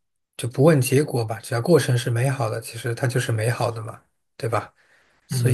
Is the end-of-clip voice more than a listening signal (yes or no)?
yes